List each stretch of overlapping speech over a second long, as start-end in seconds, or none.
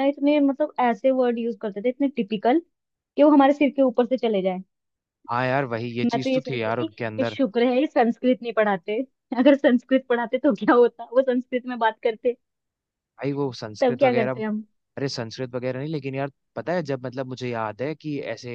6.0-7.4